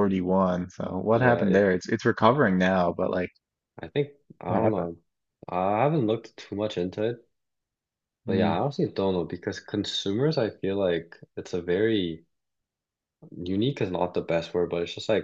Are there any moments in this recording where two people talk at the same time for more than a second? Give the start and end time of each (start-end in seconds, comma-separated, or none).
none